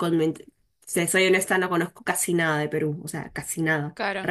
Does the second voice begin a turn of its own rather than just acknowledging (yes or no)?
no